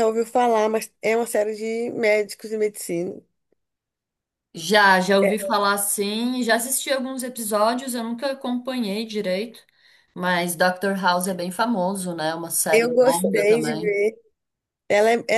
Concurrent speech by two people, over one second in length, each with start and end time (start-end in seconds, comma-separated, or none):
12.7-14.0